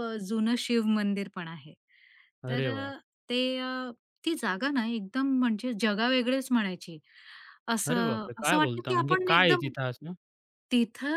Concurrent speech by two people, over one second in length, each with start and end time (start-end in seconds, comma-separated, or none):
7.9-9.7